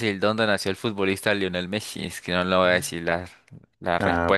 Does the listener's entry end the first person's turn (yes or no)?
yes